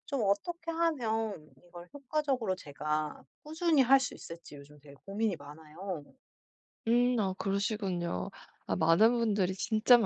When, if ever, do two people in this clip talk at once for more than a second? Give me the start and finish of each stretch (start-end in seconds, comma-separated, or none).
none